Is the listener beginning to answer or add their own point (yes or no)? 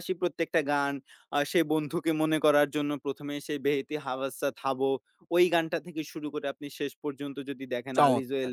no